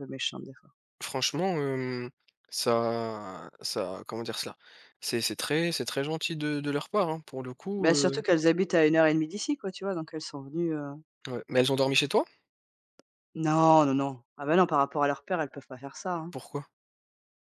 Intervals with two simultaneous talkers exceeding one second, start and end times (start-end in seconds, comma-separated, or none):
none